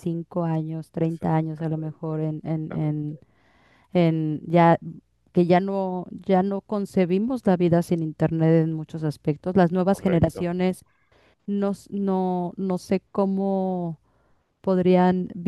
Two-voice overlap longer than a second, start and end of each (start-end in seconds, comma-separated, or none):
1.0-2.2